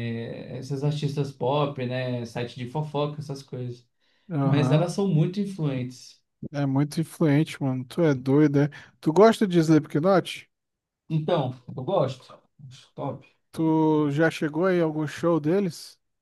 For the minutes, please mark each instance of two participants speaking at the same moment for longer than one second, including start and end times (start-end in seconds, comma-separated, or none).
none